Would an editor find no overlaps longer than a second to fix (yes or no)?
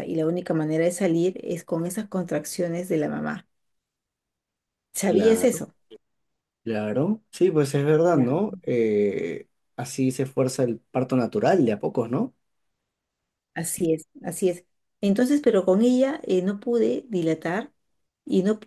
yes